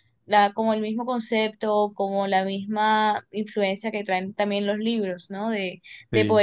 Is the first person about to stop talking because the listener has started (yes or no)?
no